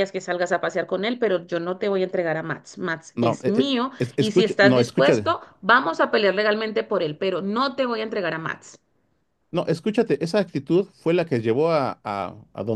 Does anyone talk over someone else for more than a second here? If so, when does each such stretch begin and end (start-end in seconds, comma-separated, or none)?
3.1-5.3